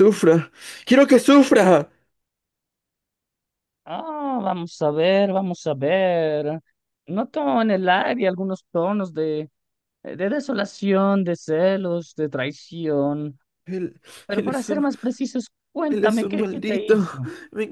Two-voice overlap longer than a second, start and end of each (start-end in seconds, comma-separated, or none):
15.8-17.1